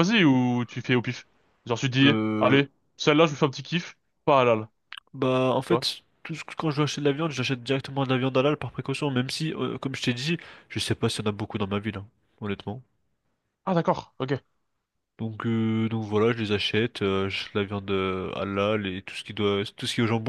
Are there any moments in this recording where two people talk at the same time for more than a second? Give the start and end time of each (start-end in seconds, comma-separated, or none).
none